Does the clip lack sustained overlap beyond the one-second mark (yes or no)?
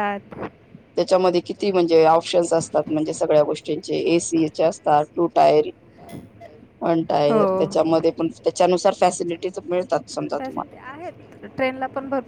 no